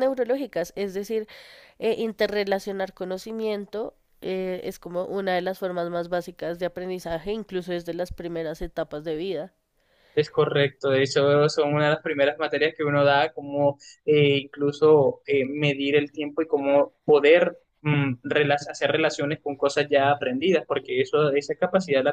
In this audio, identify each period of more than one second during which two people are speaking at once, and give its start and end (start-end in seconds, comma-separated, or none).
none